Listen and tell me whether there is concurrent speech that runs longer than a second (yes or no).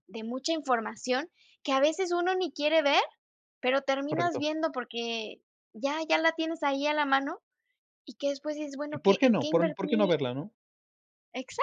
yes